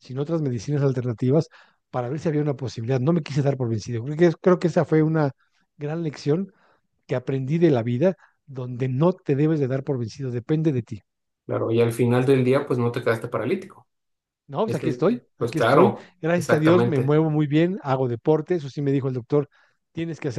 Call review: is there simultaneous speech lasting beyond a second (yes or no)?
yes